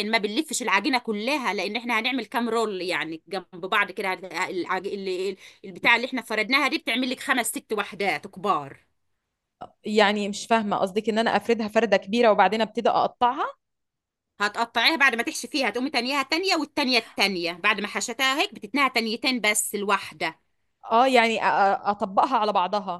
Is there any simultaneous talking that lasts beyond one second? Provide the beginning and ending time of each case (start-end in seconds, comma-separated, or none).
none